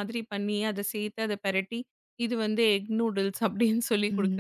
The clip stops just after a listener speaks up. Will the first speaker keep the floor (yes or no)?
no